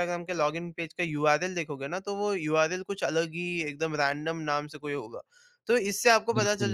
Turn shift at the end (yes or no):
no